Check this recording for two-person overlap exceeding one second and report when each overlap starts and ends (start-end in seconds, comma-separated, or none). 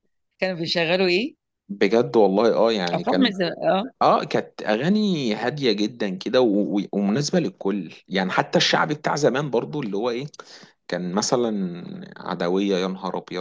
none